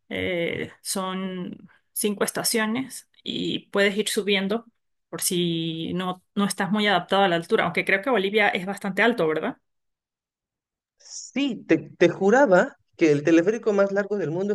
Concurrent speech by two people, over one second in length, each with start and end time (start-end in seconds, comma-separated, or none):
none